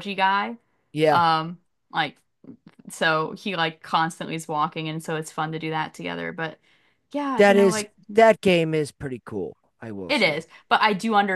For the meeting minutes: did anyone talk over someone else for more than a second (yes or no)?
no